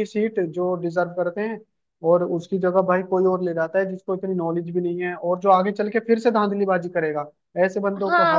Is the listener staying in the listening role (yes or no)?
no